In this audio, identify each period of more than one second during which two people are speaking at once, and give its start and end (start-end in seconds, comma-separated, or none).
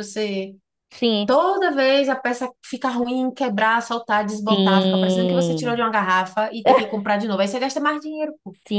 4.5-5.9